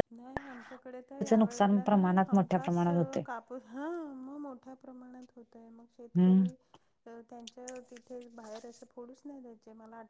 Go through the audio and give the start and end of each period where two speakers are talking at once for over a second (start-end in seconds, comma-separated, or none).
1.1-2.8